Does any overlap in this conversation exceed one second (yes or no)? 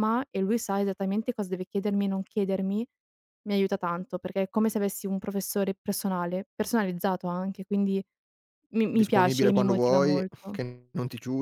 yes